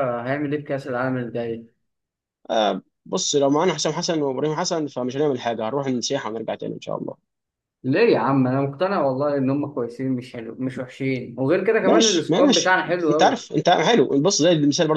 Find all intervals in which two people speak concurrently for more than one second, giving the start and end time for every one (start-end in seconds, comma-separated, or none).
11.8-13.4